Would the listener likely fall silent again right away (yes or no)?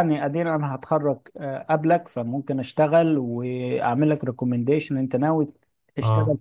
yes